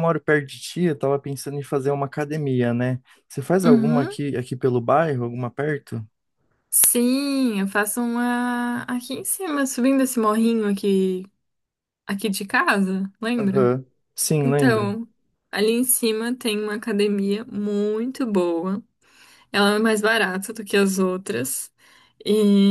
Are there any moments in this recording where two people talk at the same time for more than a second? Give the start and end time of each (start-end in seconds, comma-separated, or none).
none